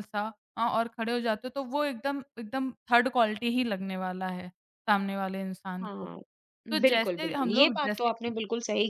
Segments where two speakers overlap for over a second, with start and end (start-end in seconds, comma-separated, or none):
6.8-8.4